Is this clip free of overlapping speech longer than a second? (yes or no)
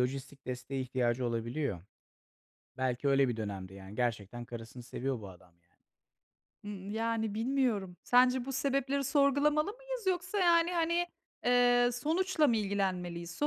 yes